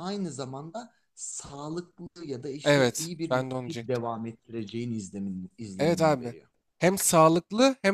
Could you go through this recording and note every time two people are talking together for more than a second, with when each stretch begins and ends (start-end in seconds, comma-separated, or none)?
2.6-4.0